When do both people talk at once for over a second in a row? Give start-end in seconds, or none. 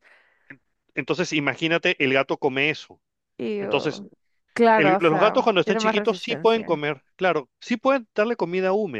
4.8-6.8